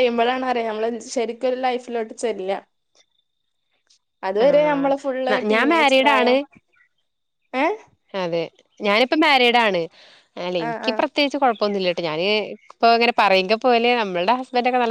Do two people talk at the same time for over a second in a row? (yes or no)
yes